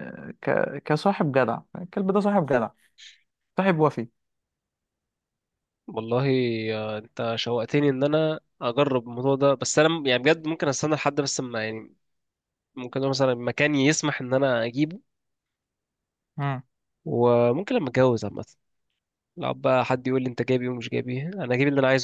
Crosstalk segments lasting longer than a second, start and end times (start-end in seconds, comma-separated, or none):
none